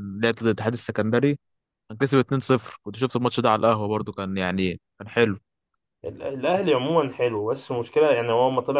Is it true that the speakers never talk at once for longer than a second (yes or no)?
yes